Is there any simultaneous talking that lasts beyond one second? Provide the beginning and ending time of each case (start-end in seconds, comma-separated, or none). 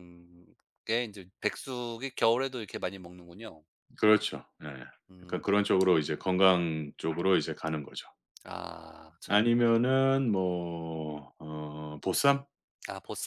none